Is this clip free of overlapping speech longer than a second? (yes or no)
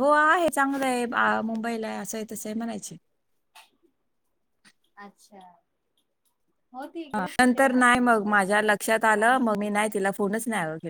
no